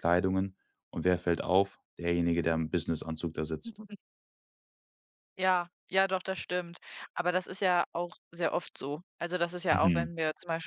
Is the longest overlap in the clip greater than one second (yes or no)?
no